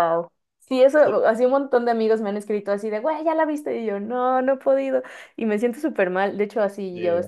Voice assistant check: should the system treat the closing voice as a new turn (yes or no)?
no